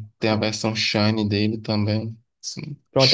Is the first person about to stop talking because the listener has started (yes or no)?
yes